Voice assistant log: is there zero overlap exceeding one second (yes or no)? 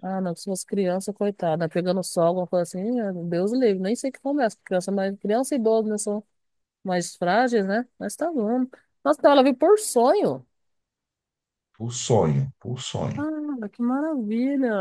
yes